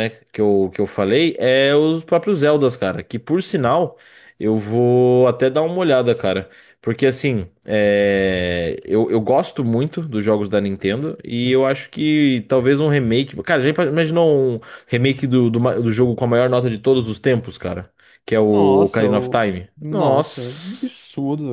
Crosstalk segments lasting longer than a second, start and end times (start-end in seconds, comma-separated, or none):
18.4-20.9